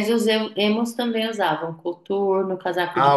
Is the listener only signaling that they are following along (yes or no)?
no